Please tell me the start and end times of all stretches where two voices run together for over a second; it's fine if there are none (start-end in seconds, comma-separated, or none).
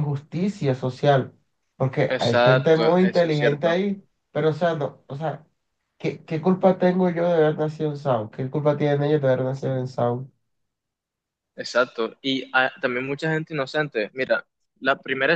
2.1-3.7